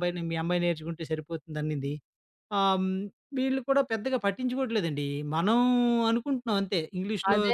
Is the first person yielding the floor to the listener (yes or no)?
yes